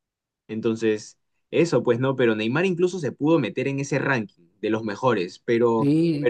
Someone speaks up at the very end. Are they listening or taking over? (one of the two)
taking over